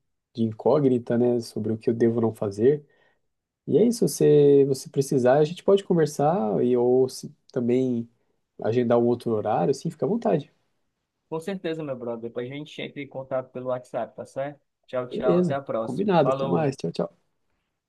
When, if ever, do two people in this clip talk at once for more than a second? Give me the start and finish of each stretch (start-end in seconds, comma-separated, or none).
15.1-16.7